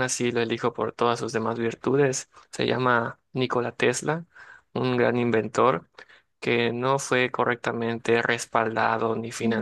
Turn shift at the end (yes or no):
no